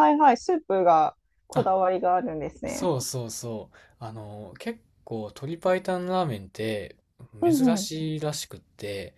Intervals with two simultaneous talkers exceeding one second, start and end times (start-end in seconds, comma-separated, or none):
none